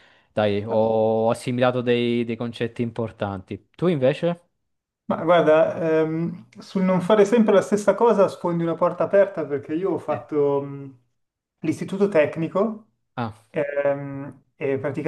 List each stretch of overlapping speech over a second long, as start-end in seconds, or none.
none